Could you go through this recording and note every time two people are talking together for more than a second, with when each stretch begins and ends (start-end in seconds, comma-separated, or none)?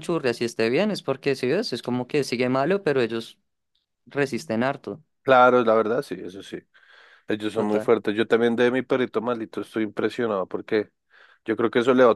none